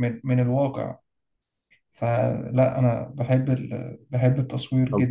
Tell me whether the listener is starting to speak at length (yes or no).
yes